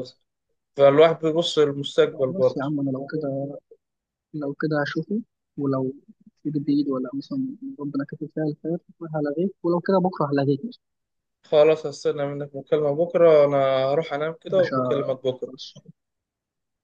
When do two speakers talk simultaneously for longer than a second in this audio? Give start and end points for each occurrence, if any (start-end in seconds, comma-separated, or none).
none